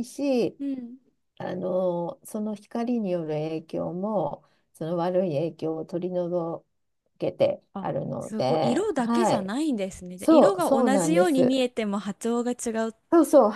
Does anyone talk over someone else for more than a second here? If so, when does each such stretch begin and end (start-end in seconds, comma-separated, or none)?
7.7-9.5, 10.2-11.6